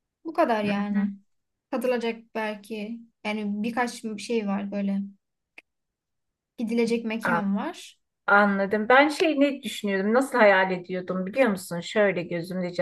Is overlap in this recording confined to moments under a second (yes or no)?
yes